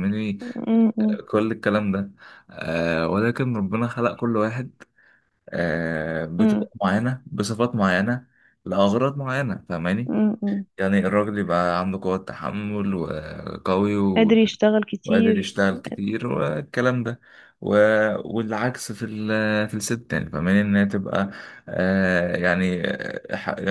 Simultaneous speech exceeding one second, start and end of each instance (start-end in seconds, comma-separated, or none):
none